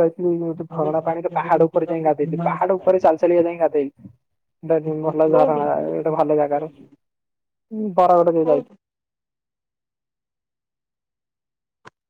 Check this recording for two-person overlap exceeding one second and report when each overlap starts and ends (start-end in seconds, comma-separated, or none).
5.3-7.0